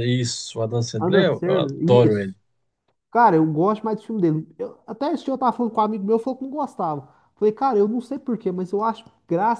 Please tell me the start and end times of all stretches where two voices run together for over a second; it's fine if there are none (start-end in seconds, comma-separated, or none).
1.0-2.3